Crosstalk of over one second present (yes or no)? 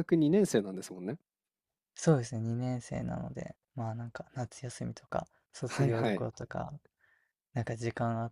no